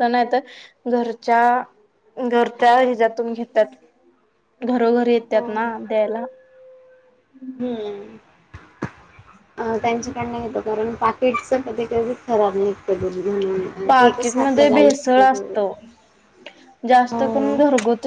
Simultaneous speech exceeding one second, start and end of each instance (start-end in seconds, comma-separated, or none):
13.9-15.5